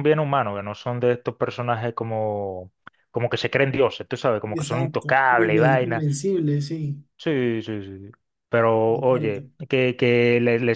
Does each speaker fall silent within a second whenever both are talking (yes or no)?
no